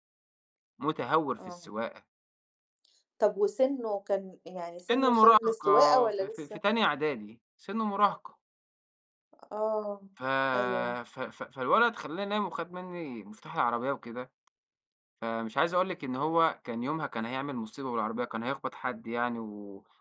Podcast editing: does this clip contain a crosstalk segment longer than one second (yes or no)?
yes